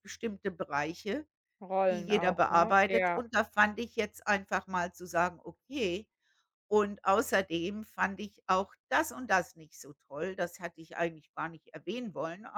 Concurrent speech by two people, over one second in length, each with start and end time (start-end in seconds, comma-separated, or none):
1.9-3.2